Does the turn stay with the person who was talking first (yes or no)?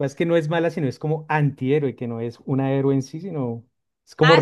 no